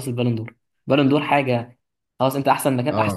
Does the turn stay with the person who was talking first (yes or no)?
yes